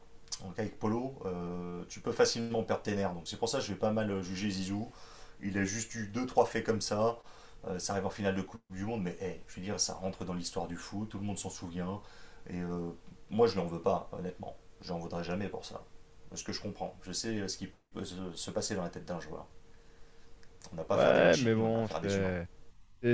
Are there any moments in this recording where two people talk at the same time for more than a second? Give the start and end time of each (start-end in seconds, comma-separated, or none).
20.9-22.3